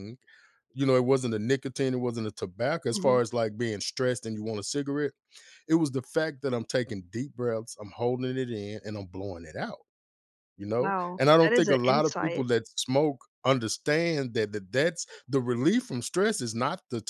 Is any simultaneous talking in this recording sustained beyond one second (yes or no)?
yes